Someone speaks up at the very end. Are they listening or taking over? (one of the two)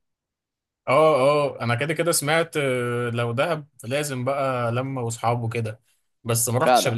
listening